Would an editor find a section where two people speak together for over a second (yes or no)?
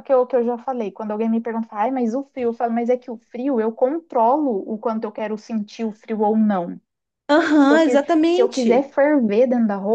yes